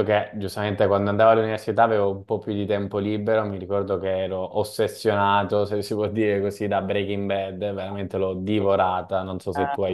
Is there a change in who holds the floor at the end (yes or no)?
yes